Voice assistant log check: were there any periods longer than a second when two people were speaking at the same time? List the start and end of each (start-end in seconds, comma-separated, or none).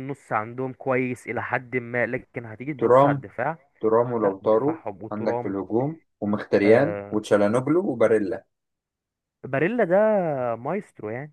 4.2-5.6